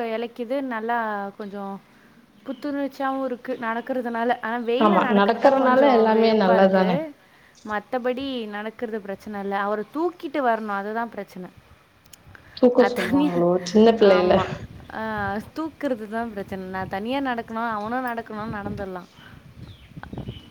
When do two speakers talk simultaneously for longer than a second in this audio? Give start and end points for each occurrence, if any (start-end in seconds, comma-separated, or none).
4.8-6.9